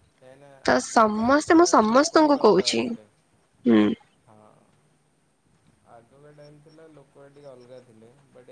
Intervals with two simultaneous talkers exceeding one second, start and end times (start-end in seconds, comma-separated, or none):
0.7-2.8